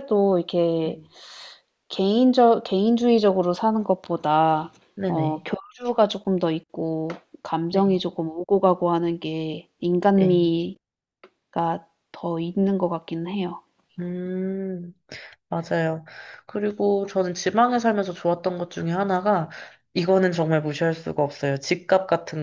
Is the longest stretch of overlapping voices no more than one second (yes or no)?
yes